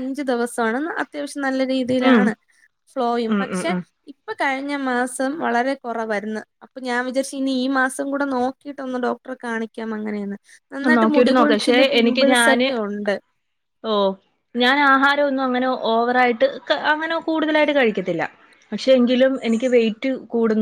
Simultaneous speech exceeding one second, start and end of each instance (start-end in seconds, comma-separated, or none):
11.0-12.7